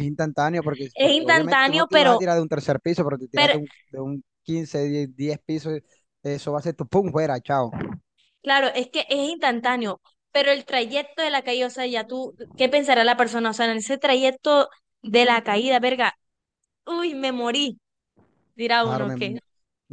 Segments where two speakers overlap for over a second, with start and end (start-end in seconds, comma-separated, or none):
0.9-2.2